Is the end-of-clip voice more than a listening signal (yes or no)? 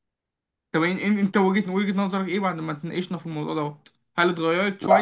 no